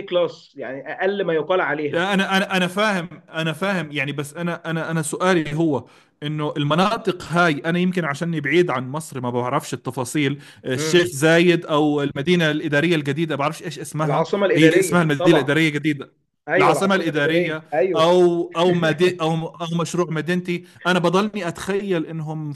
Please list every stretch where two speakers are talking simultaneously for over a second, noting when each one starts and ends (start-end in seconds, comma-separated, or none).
14.0-15.6, 16.6-18.1